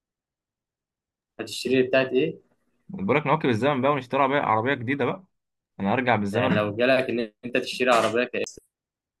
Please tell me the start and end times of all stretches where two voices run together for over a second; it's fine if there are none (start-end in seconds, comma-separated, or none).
none